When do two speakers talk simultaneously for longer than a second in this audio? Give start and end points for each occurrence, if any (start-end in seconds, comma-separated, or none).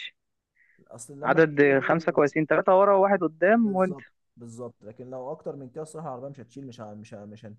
none